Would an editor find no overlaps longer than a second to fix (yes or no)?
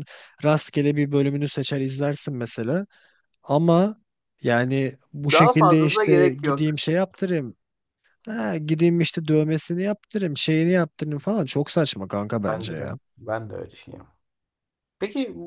no